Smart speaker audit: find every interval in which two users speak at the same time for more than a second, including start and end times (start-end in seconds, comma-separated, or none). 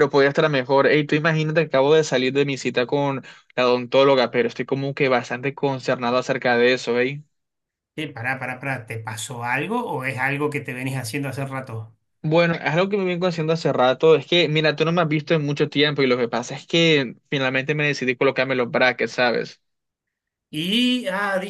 none